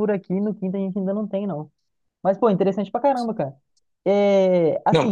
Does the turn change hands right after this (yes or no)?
no